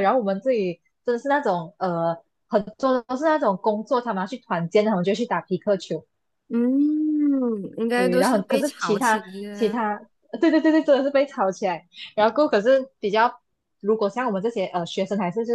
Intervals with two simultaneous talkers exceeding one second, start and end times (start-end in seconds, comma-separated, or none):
7.9-9.8